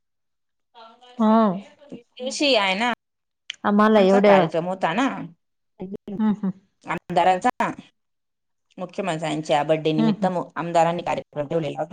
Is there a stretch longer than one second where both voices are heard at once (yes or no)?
no